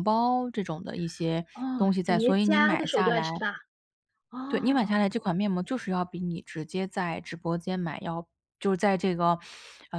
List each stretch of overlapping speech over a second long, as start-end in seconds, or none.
1.5-3.3